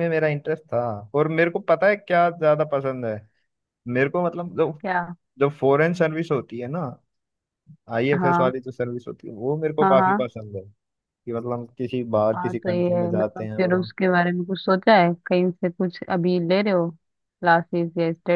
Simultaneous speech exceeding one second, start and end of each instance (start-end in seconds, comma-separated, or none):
12.3-13.9